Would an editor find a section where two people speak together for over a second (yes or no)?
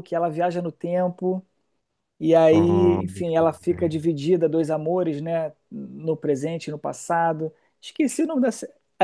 yes